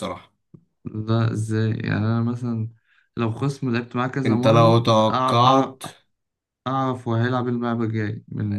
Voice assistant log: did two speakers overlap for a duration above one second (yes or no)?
yes